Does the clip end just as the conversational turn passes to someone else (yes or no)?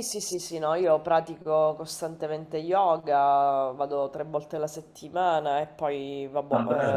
no